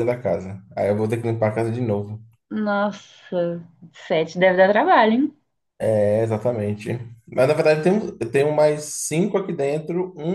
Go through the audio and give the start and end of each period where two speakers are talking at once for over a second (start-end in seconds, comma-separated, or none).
none